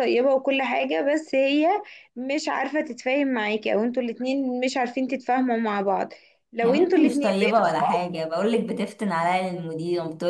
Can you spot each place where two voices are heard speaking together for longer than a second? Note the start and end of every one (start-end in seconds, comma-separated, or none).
6.6-8.0